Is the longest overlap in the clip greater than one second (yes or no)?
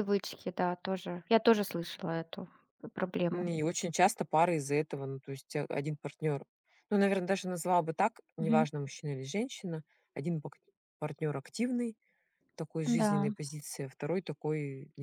no